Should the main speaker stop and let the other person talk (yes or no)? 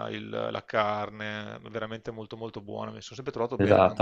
yes